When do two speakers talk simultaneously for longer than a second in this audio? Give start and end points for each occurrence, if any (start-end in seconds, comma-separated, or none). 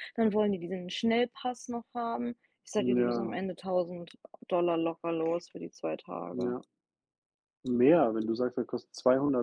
none